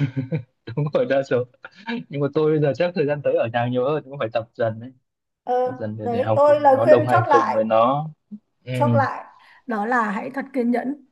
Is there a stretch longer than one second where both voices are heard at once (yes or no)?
yes